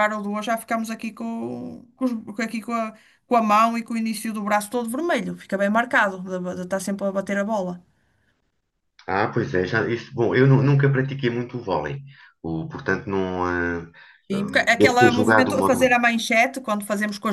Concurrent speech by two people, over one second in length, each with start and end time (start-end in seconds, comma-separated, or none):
14.3-16.1